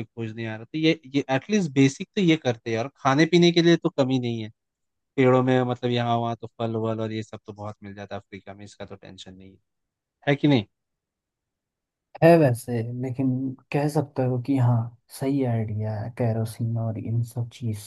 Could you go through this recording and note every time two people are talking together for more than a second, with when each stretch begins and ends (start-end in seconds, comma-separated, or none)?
none